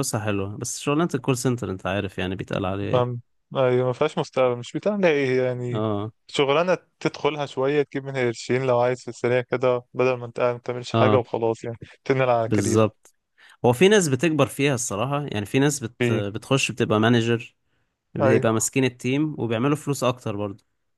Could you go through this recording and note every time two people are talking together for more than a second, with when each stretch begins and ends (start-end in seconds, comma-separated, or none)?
none